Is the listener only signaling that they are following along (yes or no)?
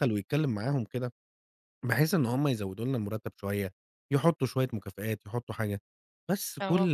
yes